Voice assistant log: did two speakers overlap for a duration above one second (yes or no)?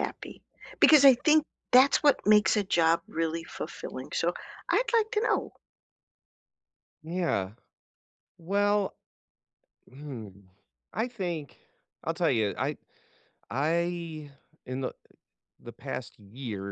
no